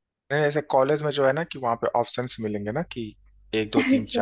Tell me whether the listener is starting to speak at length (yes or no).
yes